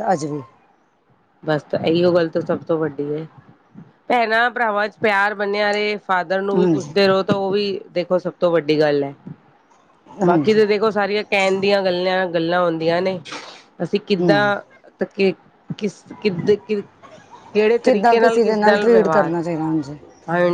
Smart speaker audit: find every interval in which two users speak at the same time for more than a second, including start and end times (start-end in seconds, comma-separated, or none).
17.8-19.4